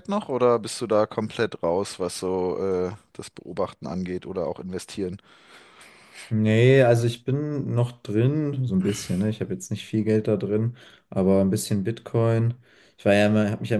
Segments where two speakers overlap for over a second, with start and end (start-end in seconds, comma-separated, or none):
none